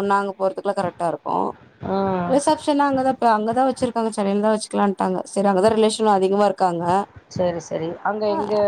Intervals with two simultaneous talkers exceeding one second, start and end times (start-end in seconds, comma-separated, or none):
none